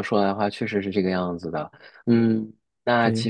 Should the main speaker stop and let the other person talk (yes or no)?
no